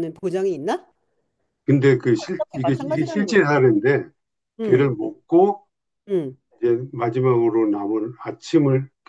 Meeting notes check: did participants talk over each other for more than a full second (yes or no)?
yes